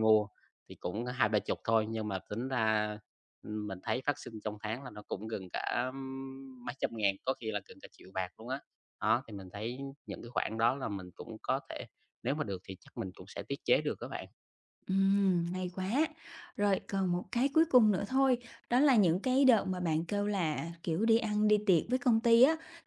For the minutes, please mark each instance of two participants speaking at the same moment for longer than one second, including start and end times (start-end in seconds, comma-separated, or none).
none